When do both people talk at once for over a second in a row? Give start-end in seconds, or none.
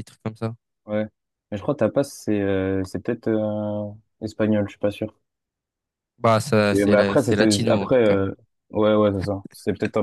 6.7-8.2